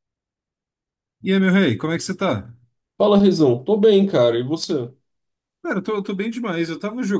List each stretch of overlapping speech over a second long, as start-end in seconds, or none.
none